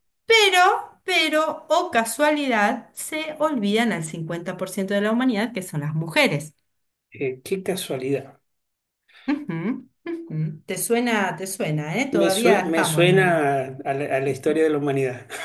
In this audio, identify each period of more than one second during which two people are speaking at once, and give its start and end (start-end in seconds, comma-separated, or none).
12.1-13.5